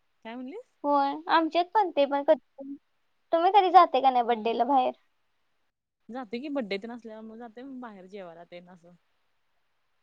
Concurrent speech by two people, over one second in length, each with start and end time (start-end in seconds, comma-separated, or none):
none